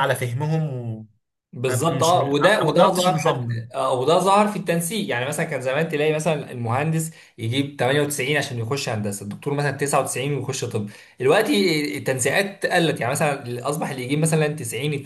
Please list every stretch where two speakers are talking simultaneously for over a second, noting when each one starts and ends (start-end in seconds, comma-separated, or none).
1.7-3.6